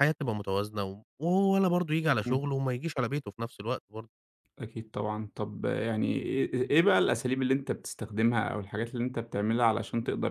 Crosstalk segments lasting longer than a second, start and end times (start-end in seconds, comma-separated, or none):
none